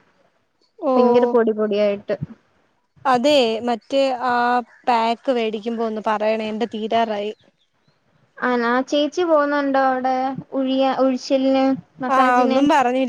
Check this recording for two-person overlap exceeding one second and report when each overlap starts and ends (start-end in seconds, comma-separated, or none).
none